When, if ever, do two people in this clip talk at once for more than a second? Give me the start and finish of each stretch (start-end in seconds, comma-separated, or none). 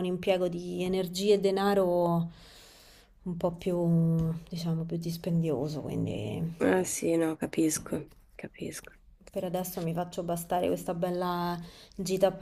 none